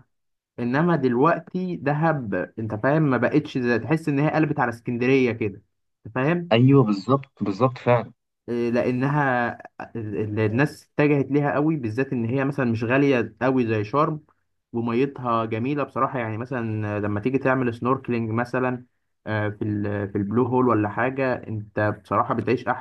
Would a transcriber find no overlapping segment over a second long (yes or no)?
yes